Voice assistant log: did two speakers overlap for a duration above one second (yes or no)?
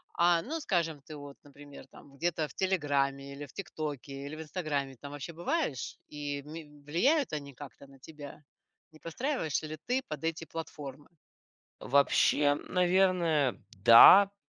no